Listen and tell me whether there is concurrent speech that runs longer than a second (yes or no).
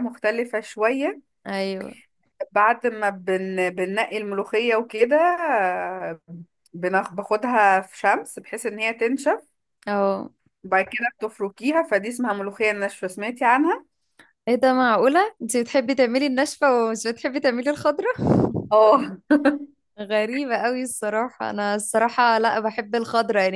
no